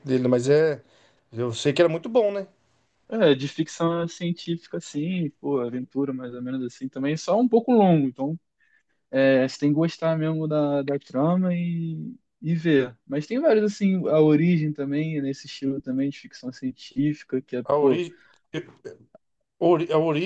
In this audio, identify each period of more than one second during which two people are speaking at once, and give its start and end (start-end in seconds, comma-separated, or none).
none